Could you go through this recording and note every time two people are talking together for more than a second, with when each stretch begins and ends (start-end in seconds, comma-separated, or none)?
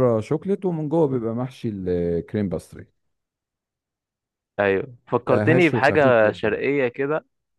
5.3-6.6